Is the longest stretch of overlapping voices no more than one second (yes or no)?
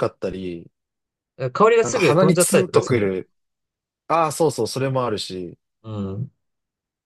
no